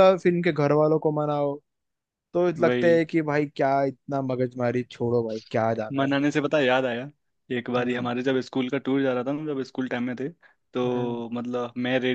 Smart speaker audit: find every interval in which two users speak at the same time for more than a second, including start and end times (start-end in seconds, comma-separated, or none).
none